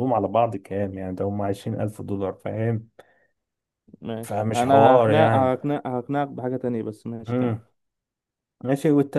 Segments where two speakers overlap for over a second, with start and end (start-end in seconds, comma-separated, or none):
4.2-5.6